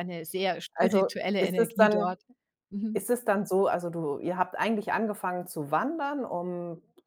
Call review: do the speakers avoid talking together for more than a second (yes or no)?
no